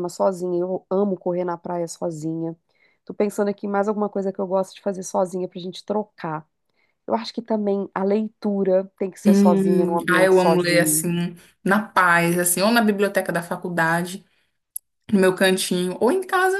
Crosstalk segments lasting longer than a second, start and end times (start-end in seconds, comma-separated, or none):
9.3-11.1